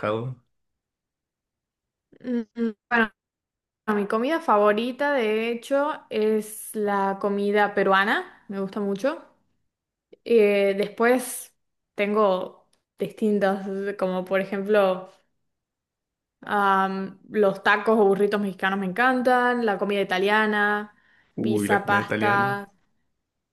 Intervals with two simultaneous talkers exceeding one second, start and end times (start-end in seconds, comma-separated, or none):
21.4-22.6